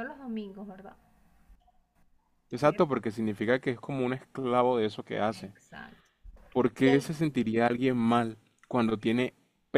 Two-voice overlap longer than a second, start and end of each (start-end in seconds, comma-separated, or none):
none